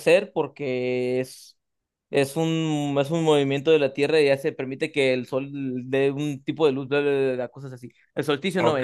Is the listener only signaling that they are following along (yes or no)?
no